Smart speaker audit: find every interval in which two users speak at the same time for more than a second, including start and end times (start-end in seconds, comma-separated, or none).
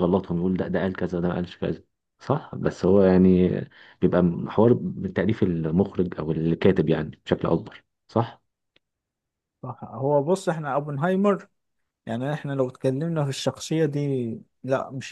none